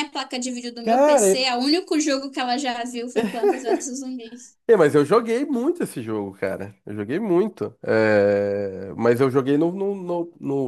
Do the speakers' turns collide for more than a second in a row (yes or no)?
no